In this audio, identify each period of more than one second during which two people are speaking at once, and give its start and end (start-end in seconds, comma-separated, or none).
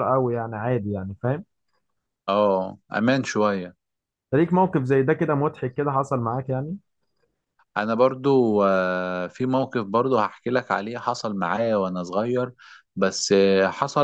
none